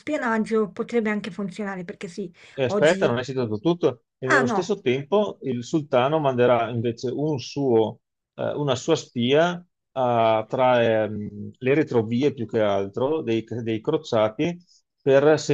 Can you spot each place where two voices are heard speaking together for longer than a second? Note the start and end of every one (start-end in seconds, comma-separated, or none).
none